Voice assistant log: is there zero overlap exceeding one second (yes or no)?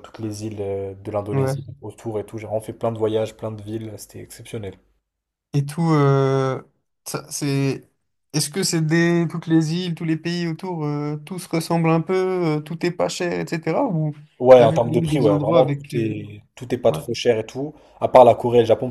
no